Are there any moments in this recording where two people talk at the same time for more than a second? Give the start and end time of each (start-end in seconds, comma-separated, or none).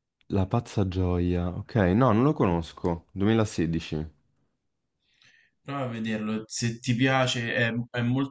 none